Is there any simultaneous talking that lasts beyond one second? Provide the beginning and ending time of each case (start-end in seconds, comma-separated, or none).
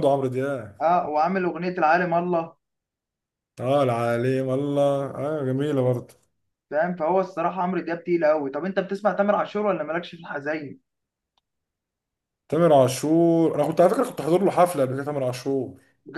none